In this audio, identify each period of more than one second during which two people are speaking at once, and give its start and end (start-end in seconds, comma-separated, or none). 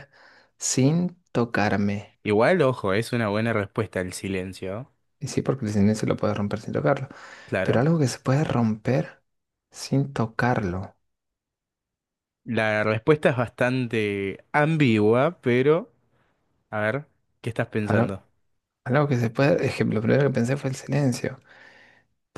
none